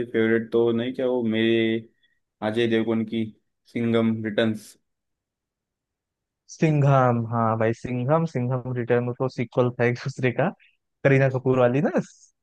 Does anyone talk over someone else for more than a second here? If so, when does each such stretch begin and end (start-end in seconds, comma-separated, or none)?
none